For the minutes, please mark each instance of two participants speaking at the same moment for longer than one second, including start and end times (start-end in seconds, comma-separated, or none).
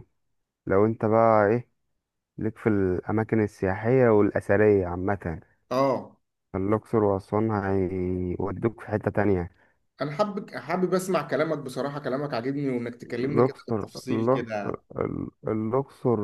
13.0-14.8